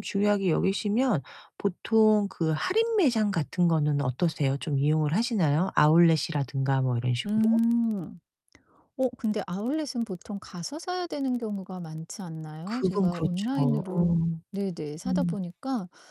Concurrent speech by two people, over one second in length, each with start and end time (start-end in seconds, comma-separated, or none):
12.7-14.4